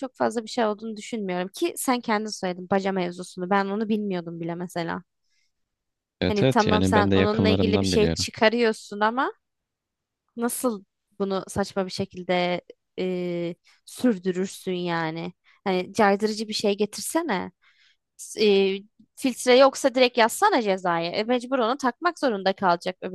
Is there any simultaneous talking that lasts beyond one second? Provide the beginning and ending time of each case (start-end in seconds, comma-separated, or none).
6.3-8.3